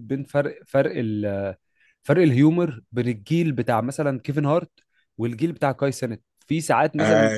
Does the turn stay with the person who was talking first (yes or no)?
yes